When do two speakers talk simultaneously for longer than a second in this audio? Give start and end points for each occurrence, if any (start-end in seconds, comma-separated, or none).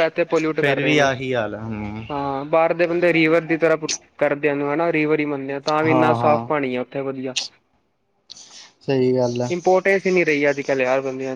none